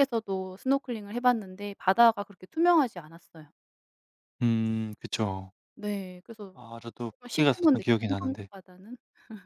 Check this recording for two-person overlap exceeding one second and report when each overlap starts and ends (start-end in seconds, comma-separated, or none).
7.2-8.5